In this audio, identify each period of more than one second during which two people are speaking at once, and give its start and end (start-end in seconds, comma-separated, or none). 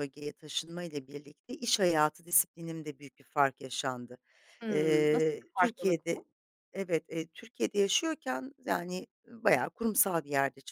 4.7-6.2